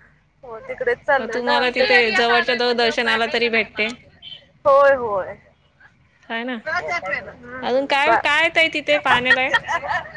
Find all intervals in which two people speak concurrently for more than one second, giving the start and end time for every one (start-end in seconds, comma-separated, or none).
1.4-3.9